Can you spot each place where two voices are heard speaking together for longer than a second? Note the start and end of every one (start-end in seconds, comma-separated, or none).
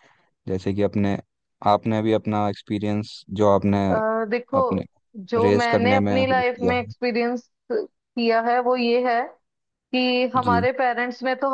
5.4-6.9